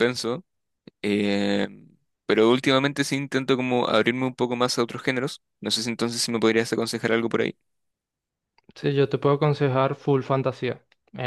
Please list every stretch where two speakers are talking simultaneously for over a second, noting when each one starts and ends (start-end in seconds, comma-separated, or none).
none